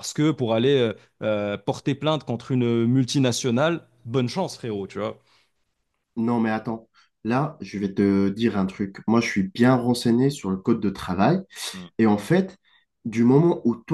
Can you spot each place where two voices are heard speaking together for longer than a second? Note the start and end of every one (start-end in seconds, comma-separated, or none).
none